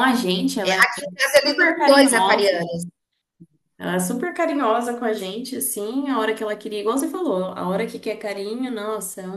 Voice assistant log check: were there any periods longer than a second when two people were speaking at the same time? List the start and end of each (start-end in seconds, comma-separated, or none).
0.6-2.6